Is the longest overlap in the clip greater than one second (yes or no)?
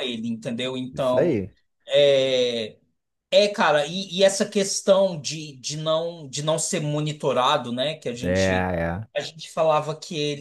no